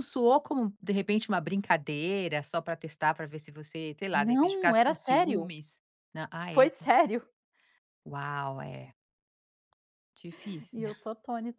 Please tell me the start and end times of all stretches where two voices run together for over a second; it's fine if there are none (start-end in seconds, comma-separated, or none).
4.1-5.5